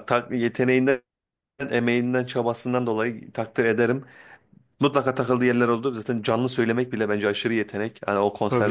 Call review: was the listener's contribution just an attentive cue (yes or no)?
no